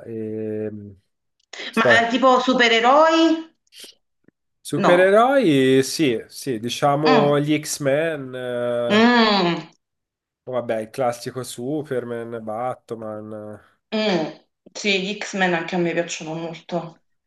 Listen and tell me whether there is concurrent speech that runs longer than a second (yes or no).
no